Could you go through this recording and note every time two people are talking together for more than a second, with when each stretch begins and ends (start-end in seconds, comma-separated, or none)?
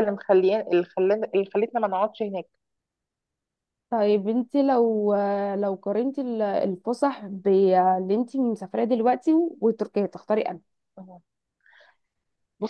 none